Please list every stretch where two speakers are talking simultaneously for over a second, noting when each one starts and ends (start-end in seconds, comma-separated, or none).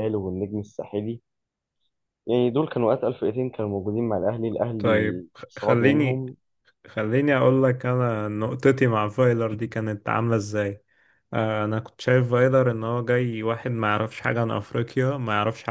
4.8-6.2